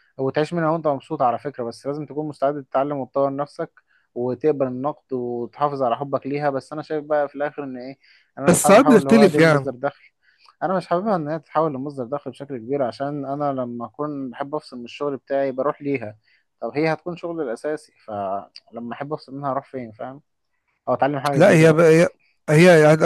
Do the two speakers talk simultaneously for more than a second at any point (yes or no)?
yes